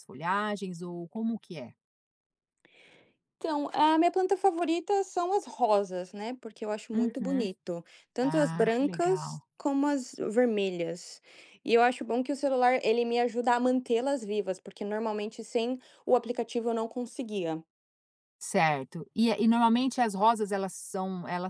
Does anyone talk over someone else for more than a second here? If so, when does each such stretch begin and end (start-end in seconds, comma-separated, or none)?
8.2-9.4